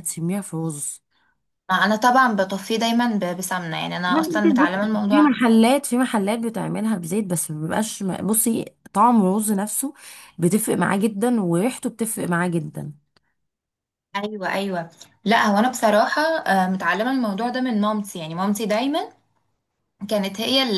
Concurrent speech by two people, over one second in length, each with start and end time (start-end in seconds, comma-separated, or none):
4.1-5.4